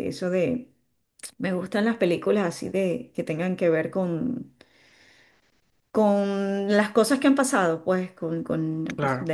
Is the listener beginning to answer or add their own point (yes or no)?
no